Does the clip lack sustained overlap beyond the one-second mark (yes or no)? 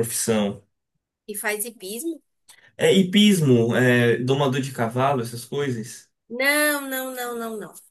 yes